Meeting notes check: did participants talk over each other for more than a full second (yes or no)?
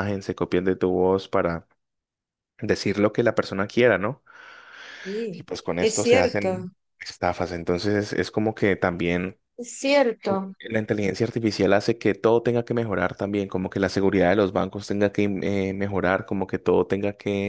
yes